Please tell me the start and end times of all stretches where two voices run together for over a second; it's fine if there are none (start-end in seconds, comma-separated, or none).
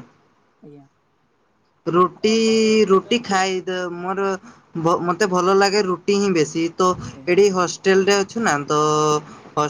2.2-3.6